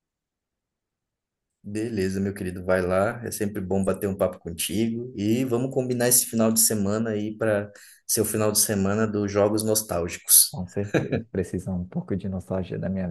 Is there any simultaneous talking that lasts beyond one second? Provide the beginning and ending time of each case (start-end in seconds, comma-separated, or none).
none